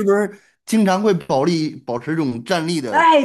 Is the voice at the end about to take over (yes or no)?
yes